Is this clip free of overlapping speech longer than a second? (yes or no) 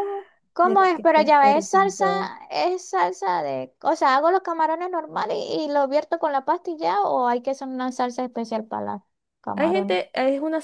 no